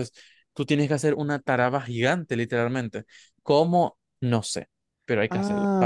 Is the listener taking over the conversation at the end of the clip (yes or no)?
yes